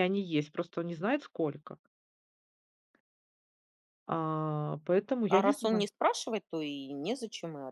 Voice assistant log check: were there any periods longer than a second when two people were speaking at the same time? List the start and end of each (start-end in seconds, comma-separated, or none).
none